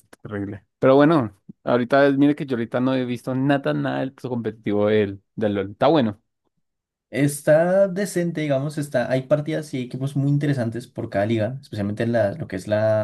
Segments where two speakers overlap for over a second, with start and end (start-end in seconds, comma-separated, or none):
none